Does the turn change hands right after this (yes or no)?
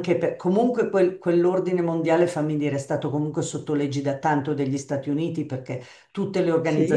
no